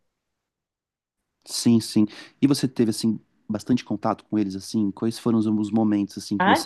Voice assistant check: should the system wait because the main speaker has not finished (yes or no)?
no